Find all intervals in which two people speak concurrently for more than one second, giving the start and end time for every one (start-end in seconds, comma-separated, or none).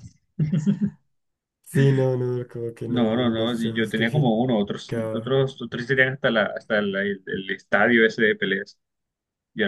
2.8-4.3